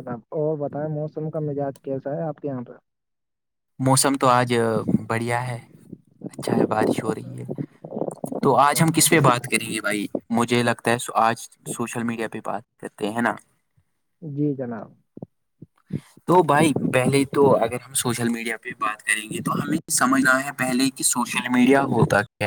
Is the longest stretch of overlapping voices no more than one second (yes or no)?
yes